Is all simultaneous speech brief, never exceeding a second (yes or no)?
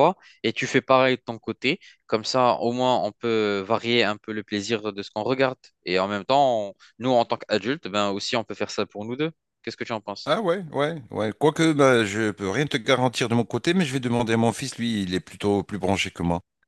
yes